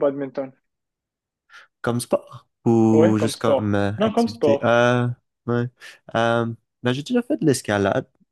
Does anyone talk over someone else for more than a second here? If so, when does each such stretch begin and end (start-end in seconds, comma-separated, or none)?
2.9-4.7